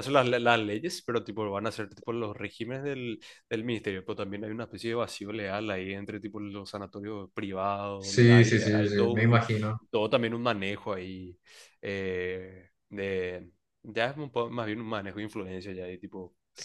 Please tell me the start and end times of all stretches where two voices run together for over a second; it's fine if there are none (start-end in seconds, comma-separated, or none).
8.0-9.4